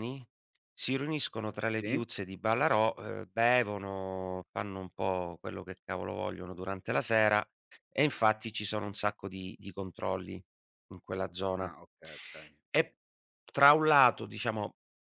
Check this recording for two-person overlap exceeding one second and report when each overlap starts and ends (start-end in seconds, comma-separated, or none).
none